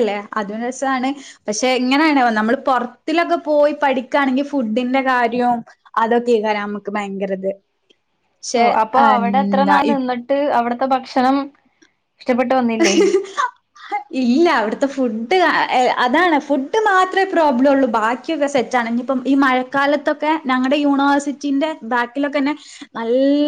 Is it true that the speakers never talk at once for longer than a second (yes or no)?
yes